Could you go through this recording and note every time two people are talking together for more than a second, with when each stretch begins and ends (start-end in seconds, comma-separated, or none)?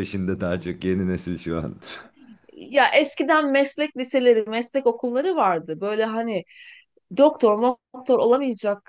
none